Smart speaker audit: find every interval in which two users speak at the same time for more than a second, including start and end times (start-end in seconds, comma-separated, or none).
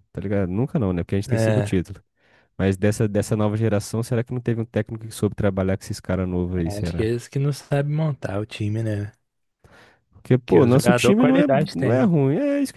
10.4-12.1